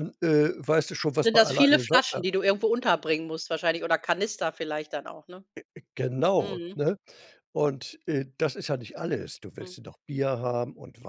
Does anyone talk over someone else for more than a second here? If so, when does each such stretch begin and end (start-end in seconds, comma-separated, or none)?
0.9-2.2